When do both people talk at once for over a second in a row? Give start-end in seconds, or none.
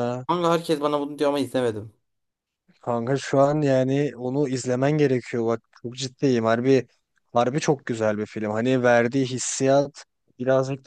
none